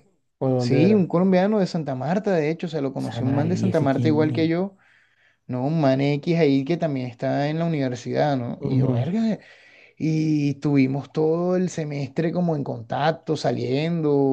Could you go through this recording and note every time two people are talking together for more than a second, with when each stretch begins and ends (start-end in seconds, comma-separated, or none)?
3.0-4.5